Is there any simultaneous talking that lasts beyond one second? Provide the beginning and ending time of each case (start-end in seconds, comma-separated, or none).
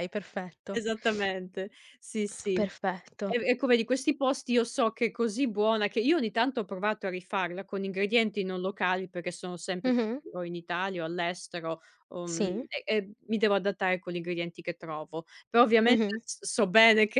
none